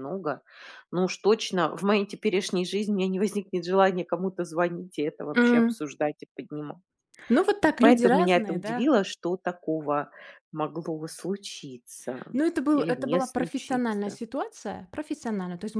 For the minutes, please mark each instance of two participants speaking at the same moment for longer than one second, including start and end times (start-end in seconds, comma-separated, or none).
7.6-8.9, 12.7-14.2